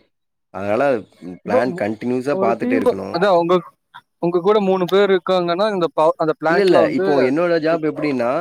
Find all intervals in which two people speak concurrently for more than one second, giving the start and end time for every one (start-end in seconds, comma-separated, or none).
none